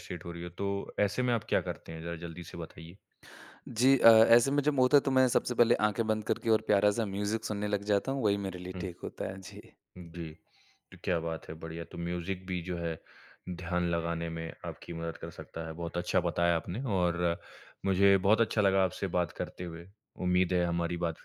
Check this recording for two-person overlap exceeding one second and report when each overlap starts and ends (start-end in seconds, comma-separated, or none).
none